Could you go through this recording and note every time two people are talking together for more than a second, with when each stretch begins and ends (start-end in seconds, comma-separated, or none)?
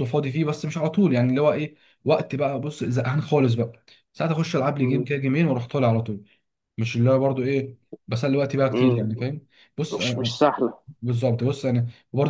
none